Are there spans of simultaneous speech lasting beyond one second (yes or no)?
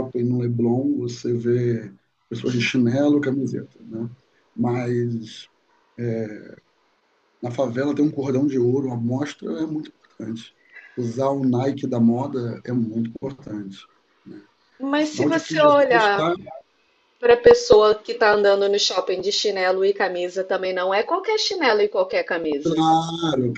yes